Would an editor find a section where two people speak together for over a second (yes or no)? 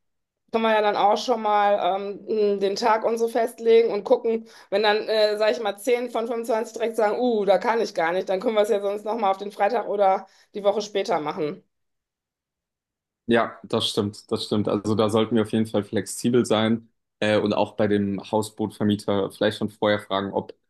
no